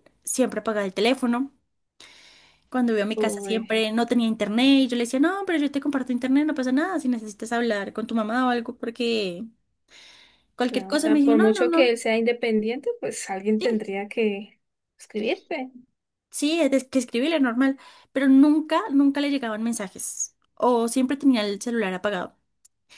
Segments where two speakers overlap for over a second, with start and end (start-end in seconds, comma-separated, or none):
10.7-11.9